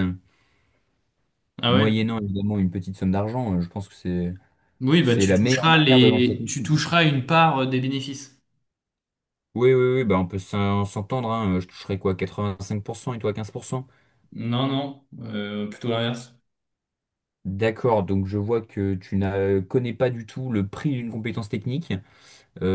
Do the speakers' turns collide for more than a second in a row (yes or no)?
yes